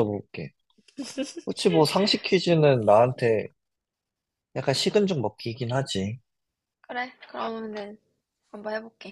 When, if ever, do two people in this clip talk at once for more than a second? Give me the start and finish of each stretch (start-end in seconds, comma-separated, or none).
none